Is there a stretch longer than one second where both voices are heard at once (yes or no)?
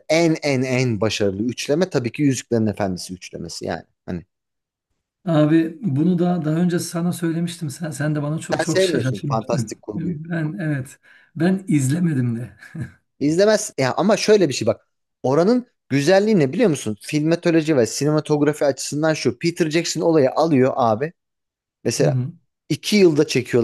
yes